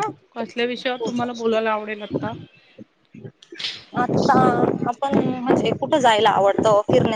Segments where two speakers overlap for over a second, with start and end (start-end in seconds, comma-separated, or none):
none